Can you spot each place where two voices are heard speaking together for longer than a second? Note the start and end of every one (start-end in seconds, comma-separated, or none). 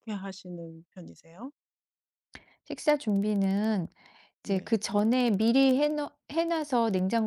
none